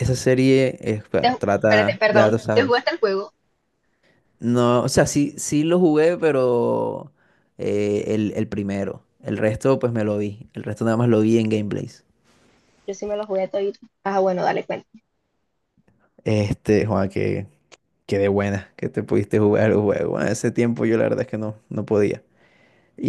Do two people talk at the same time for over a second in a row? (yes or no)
yes